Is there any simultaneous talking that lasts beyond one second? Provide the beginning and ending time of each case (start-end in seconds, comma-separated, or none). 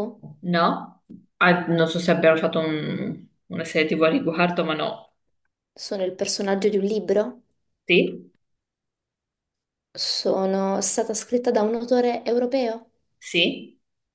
none